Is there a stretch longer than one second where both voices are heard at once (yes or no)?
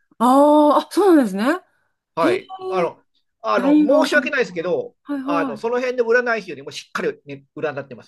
yes